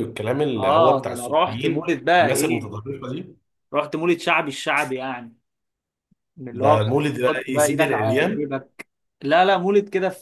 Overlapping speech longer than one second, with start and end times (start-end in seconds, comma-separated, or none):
0.6-2.7, 6.5-8.5